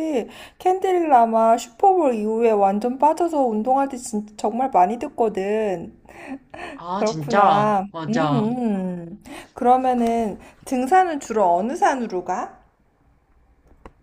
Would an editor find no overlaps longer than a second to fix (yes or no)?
no